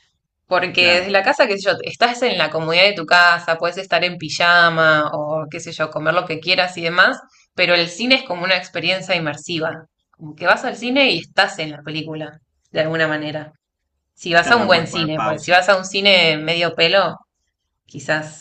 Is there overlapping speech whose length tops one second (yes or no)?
yes